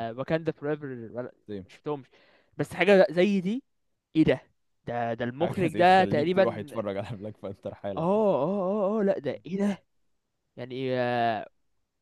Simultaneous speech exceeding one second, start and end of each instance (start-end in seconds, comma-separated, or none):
5.4-6.7